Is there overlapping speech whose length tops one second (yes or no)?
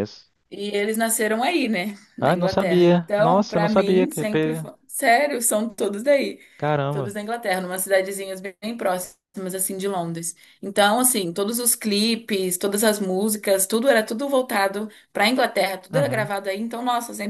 yes